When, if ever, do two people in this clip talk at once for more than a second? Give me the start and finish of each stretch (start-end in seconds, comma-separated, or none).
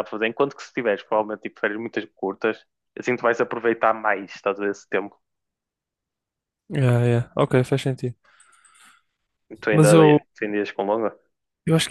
none